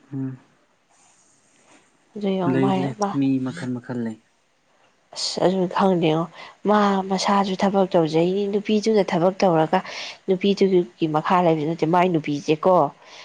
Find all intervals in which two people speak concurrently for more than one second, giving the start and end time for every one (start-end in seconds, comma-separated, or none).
none